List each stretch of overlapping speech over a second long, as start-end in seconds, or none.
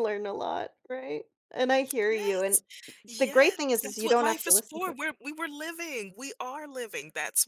3.2-5.0